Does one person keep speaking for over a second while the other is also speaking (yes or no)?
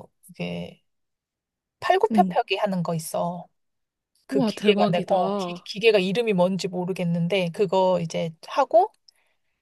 yes